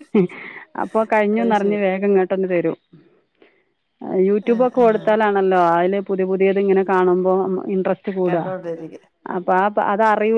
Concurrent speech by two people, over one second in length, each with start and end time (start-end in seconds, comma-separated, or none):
none